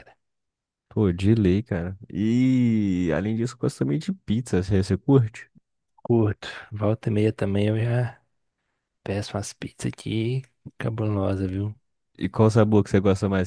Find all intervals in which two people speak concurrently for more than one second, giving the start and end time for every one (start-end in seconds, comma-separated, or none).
none